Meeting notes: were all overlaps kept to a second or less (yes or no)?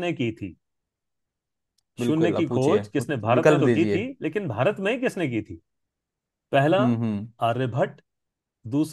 no